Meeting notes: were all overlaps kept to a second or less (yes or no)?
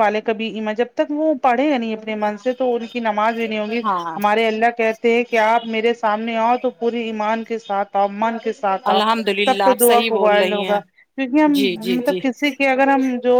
no